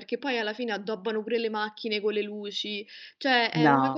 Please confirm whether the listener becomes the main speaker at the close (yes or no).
no